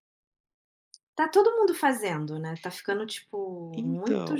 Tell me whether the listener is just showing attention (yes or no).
no